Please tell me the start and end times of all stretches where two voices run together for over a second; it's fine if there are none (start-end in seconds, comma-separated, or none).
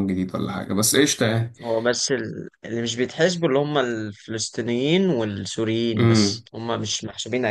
none